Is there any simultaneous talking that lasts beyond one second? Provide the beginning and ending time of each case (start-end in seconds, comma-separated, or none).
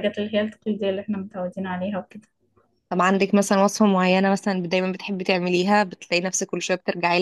none